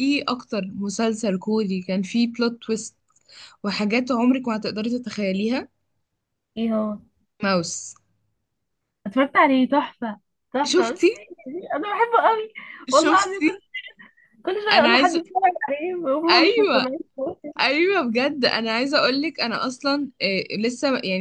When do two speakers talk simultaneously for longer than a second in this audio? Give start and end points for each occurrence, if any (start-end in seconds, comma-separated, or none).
none